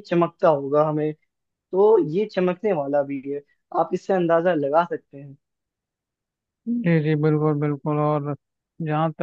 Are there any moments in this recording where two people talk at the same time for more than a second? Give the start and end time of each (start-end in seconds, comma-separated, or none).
none